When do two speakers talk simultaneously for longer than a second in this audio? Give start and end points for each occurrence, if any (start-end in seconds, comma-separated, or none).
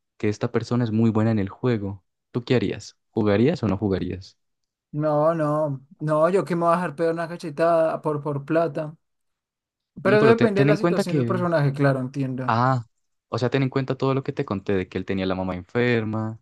10.0-11.4